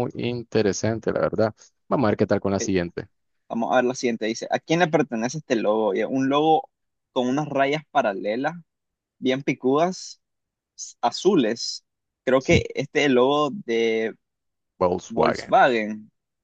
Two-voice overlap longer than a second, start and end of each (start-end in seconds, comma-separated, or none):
none